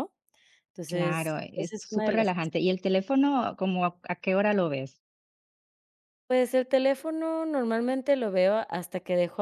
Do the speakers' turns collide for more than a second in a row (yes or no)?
yes